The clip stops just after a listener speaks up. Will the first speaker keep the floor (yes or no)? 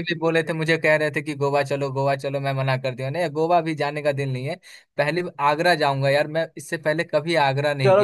no